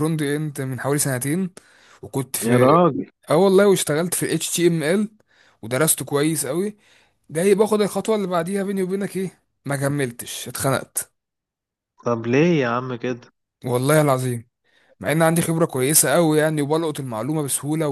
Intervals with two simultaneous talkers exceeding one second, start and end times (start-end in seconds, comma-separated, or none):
none